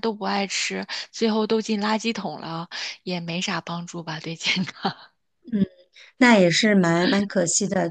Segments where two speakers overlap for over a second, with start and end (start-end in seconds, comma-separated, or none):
none